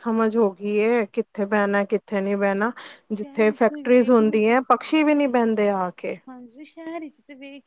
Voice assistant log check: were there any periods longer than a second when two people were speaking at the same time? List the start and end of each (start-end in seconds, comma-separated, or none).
3.1-5.0